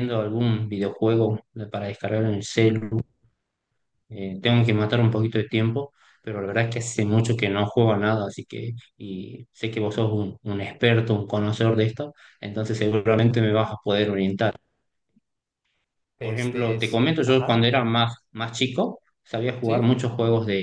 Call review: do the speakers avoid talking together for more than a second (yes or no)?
no